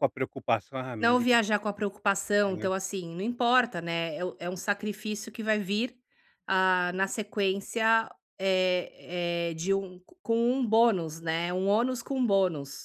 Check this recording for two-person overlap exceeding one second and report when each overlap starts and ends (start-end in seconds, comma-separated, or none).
none